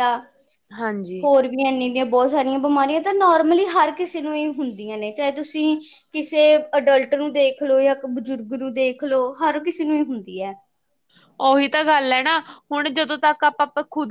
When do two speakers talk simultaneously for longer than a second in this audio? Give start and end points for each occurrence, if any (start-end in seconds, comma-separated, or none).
none